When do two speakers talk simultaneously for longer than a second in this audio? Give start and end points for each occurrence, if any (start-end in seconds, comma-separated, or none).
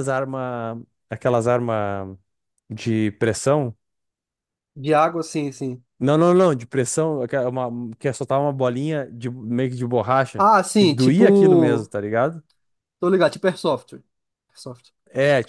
10.4-11.9